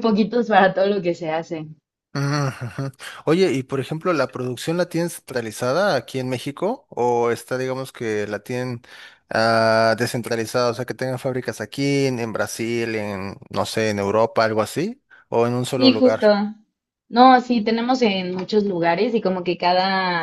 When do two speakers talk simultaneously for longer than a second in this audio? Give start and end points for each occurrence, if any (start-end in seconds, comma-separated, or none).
none